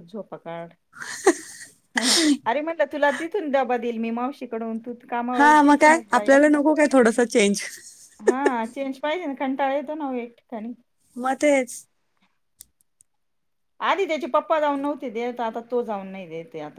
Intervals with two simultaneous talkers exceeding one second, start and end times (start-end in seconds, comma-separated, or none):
none